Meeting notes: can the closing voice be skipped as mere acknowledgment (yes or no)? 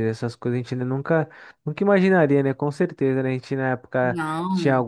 yes